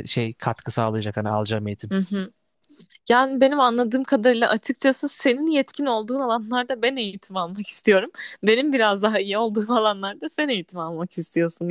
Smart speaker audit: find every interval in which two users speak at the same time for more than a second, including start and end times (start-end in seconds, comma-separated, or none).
none